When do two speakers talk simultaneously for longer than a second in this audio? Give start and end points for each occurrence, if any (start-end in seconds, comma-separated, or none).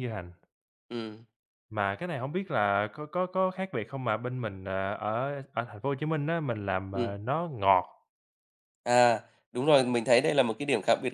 none